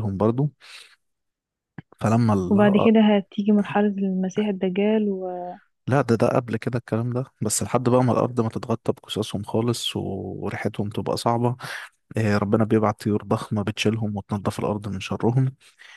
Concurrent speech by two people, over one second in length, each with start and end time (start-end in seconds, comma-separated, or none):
none